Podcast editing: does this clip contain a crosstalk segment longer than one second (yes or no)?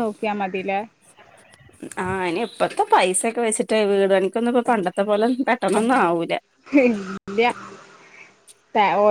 no